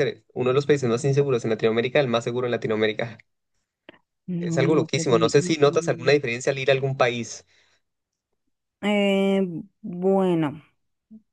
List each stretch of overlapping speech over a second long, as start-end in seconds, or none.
4.4-6.1